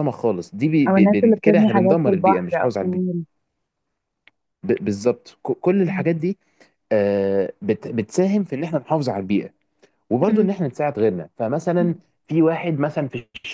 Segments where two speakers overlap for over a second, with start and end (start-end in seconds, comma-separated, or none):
0.9-3.0